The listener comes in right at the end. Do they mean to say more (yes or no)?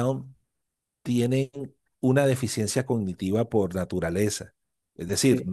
no